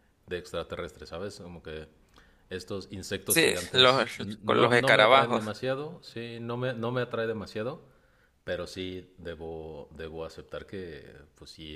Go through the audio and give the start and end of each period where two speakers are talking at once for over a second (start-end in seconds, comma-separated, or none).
3.3-5.4